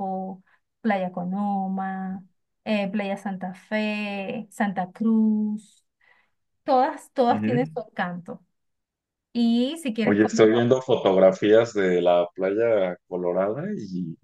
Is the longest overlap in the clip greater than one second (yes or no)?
no